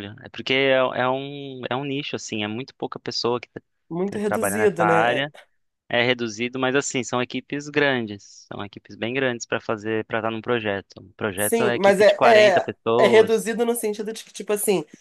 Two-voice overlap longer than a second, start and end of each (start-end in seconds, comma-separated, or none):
4.0-5.3, 11.3-13.5